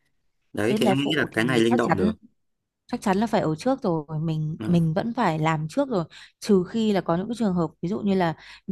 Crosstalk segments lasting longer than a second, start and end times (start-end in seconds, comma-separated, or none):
0.7-2.1